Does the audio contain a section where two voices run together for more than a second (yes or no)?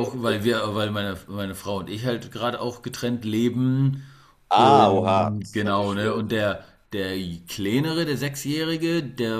yes